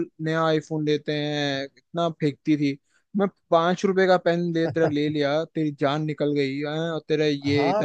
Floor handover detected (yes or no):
yes